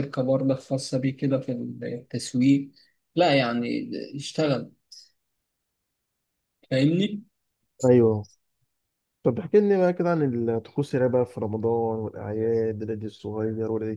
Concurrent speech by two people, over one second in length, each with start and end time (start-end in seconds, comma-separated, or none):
none